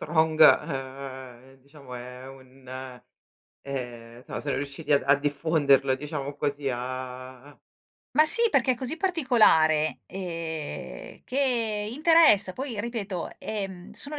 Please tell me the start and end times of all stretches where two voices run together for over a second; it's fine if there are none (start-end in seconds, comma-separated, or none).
none